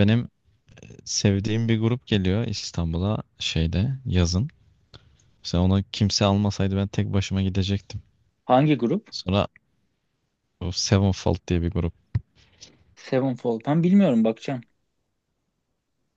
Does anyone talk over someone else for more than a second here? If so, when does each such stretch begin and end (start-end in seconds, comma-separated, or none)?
none